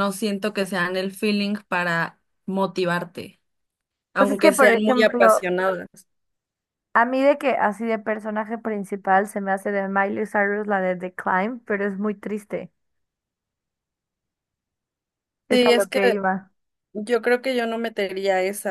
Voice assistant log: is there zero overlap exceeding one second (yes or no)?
no